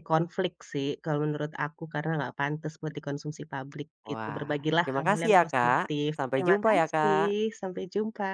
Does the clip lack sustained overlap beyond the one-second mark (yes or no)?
no